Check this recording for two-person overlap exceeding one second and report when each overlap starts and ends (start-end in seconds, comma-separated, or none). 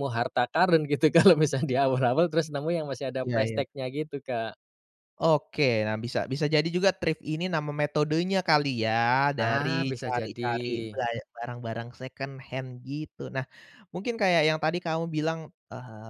9.4-11.0